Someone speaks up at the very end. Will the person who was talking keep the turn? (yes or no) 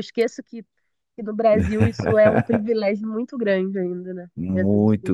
no